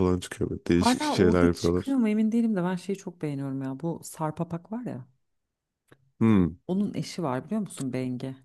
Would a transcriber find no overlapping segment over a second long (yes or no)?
no